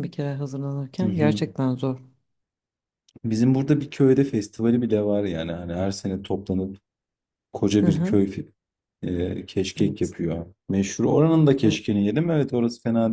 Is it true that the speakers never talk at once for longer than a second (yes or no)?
yes